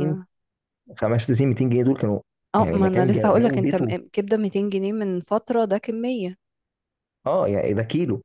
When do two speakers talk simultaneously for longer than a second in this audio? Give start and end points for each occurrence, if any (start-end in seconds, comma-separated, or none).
2.6-3.9